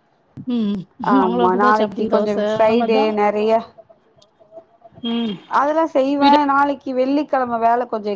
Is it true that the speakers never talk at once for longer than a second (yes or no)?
no